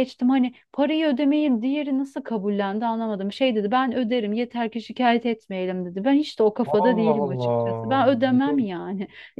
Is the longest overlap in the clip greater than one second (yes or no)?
yes